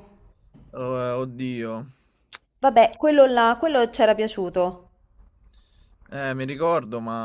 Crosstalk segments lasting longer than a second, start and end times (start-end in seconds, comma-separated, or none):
none